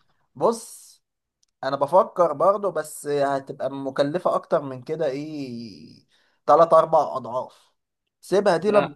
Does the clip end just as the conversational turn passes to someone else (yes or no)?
no